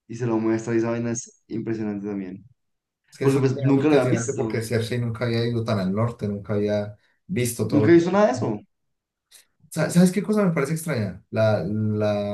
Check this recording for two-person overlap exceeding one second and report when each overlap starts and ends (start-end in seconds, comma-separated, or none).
3.2-4.6